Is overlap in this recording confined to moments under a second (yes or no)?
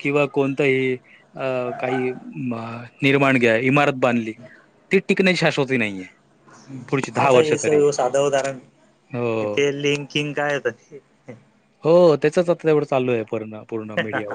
yes